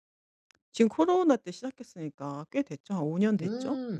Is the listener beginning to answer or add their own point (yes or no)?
yes